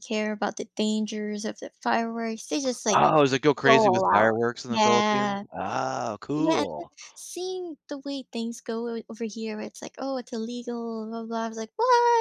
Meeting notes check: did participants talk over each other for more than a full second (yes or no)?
yes